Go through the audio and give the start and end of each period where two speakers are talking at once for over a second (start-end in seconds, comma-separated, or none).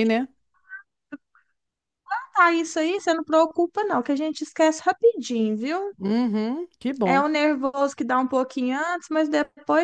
none